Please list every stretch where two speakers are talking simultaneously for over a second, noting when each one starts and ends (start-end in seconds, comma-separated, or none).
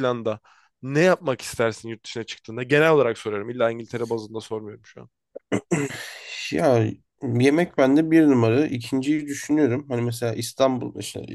none